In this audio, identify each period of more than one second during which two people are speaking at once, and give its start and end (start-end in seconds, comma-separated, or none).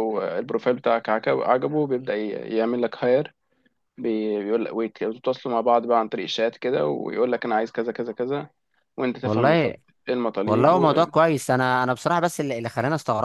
none